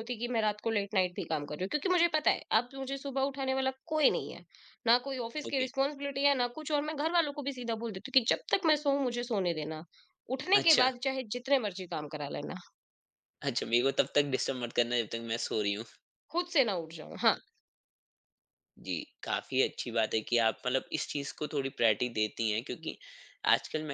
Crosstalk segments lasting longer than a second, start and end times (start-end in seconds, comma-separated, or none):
none